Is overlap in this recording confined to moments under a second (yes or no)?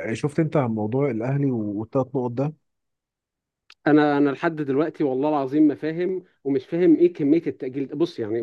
yes